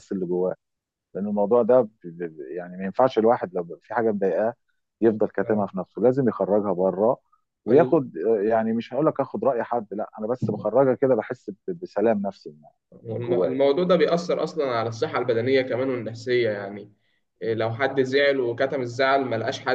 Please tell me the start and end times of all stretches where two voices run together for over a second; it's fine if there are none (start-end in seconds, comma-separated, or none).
none